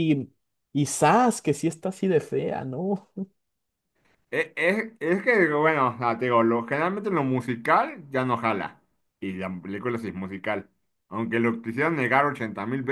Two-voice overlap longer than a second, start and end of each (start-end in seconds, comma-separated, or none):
none